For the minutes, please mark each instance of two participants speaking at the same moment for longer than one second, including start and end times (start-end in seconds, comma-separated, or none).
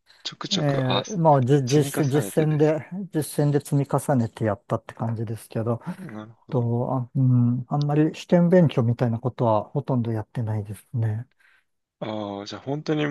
0.5-2.8